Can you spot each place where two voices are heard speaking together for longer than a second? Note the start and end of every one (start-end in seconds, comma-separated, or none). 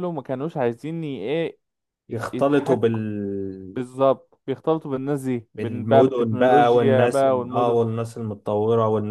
5.6-7.8